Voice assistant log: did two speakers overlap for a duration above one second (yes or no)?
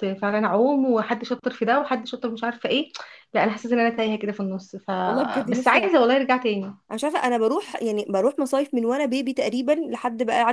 no